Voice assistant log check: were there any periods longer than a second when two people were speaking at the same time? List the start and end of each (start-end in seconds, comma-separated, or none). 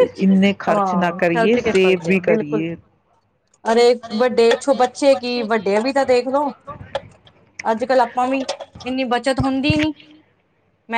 0.7-2.6